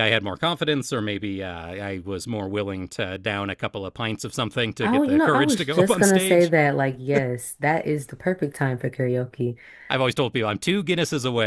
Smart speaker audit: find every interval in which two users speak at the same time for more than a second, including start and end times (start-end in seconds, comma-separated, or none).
4.8-6.5